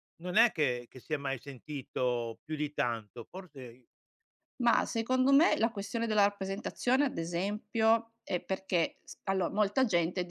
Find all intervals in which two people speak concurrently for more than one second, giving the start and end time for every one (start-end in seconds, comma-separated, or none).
none